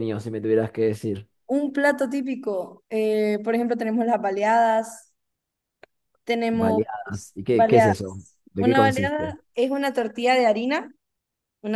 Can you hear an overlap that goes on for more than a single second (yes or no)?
yes